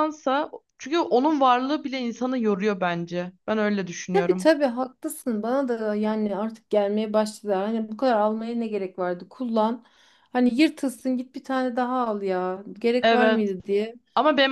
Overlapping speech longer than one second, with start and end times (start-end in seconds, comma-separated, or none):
none